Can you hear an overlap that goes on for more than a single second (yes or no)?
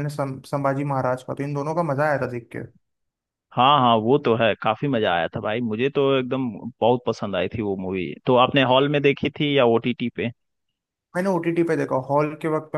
no